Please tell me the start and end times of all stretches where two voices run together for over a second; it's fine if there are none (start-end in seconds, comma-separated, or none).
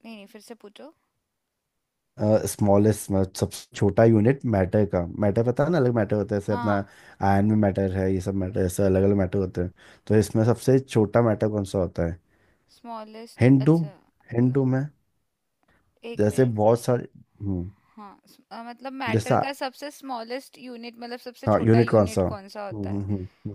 21.5-23.0